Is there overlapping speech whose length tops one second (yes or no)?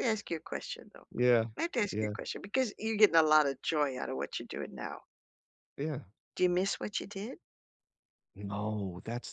no